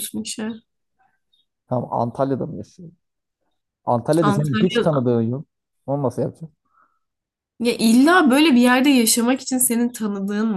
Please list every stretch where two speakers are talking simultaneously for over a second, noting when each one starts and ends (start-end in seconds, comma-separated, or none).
none